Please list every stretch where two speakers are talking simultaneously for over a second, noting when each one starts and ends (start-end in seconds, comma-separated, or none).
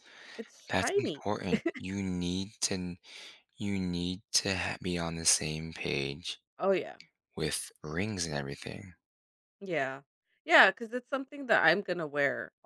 none